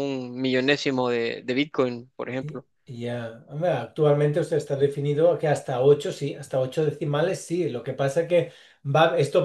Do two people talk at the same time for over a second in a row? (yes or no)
no